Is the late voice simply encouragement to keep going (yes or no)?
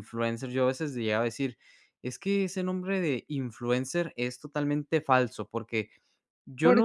yes